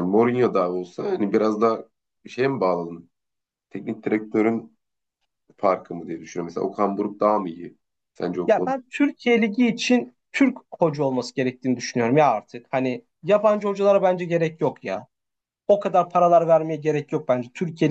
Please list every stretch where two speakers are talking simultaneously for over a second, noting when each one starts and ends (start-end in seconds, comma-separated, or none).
none